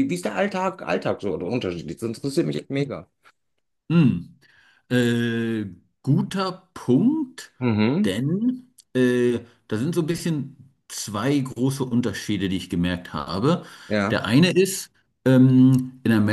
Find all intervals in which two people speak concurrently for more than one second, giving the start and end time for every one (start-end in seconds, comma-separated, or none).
none